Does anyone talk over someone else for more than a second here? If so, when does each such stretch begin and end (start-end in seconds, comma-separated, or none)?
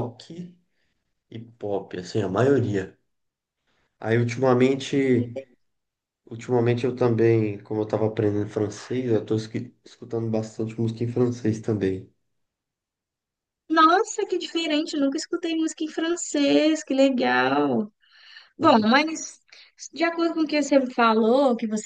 none